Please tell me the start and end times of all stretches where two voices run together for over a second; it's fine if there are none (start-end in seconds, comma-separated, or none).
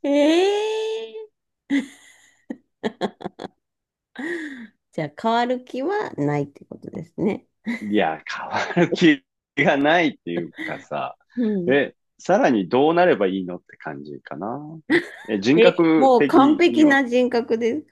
15.5-17.0